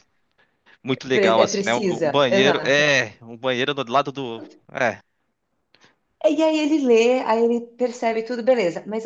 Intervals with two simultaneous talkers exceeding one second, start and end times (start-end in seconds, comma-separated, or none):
1.1-2.9